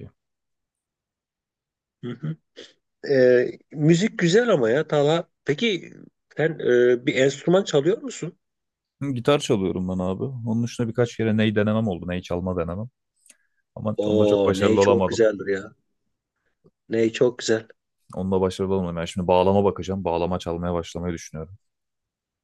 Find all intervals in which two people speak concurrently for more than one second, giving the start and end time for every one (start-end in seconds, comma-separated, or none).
14.0-15.2